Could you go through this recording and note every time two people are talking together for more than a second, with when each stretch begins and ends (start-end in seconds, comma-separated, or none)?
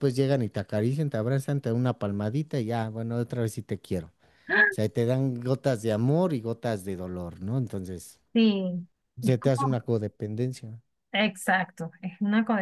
none